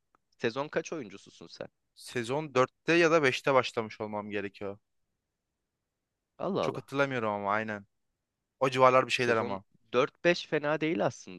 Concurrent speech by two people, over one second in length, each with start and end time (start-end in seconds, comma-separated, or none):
none